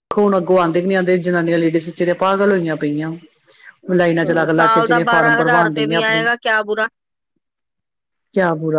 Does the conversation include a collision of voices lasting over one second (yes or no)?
yes